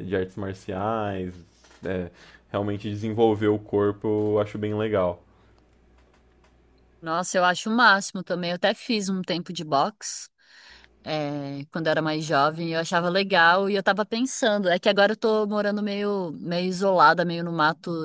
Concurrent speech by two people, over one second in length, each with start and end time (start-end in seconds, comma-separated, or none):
none